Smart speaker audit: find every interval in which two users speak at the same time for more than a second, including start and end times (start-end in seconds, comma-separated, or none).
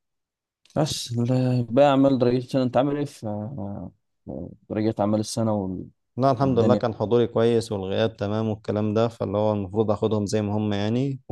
none